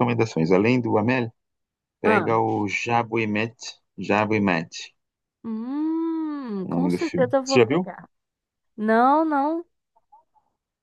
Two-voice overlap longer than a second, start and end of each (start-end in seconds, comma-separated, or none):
6.6-7.9